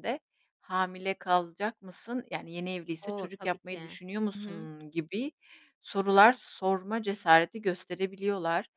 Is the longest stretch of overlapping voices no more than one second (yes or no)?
no